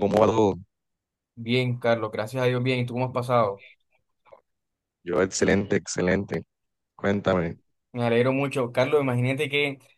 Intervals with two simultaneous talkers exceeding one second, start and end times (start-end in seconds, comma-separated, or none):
none